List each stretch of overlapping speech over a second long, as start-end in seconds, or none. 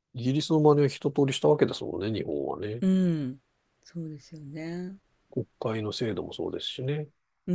none